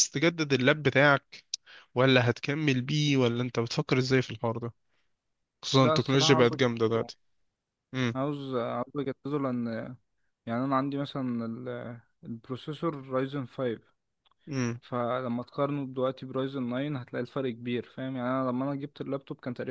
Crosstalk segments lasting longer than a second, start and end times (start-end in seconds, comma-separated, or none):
5.7-7.1